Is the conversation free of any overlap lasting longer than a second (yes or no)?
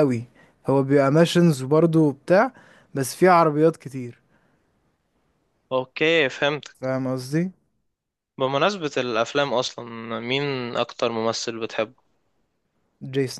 yes